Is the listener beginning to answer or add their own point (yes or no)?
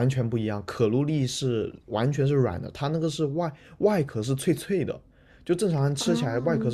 no